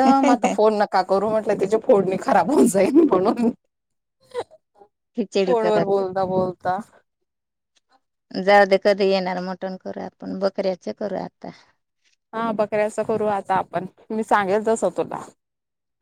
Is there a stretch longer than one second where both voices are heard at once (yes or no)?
no